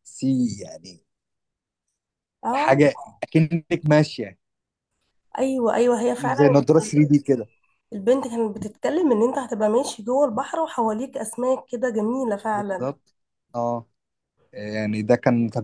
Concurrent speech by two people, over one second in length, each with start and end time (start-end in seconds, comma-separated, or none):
none